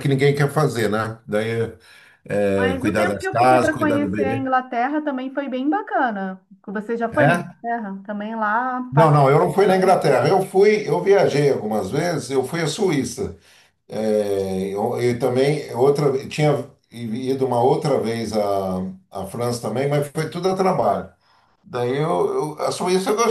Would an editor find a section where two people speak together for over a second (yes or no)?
yes